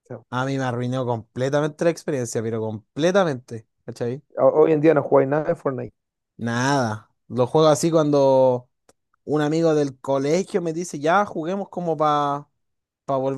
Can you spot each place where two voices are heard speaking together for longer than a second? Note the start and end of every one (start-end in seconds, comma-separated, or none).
none